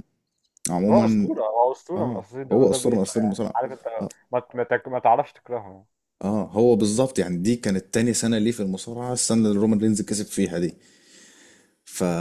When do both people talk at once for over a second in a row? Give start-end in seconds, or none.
2.0-3.6